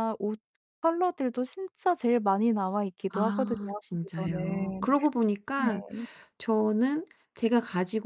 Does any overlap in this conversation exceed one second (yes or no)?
yes